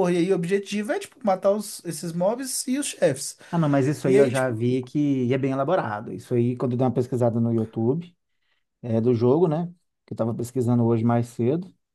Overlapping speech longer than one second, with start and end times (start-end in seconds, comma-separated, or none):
none